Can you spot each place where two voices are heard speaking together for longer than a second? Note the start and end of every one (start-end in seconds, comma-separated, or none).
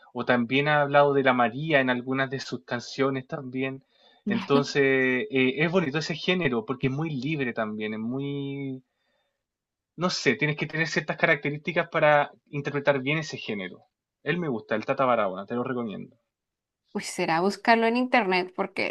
none